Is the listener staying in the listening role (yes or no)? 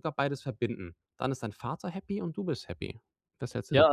no